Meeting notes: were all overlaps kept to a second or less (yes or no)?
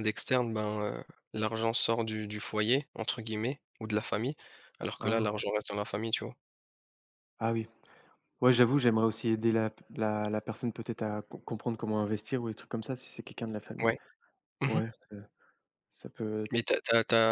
yes